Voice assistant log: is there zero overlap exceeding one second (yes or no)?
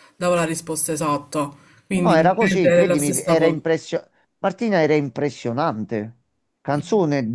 no